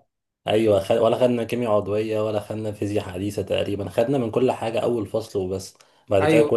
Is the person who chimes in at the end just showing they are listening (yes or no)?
no